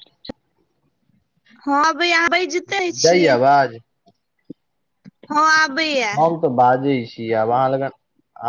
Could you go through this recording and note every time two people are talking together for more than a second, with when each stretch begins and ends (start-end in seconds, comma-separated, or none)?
none